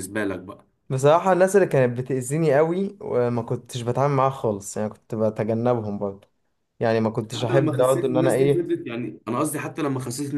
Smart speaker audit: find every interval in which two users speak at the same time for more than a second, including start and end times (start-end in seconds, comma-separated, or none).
7.3-8.7